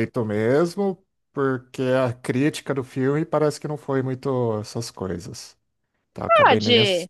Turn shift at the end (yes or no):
yes